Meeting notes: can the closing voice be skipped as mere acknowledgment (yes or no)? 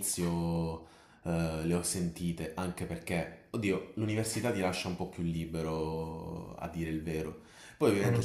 yes